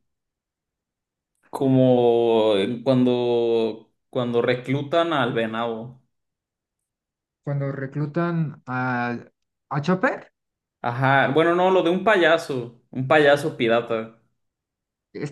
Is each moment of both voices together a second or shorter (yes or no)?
yes